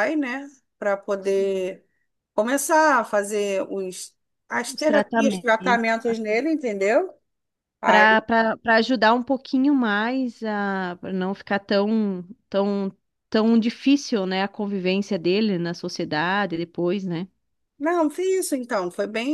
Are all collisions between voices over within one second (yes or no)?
no